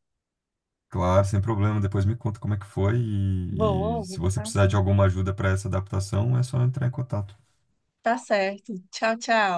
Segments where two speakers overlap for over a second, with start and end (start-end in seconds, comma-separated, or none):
3.5-4.8